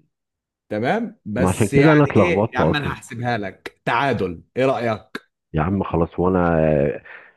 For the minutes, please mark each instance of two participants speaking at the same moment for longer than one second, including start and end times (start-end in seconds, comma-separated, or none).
1.4-3.0